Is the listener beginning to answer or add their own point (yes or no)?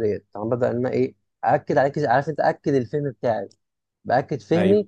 no